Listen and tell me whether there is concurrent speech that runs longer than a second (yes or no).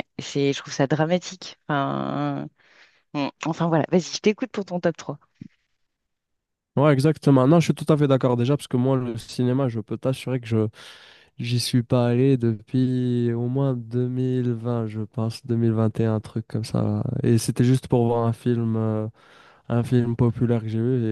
no